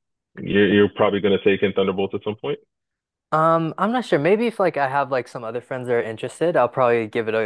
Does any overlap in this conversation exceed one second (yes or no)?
no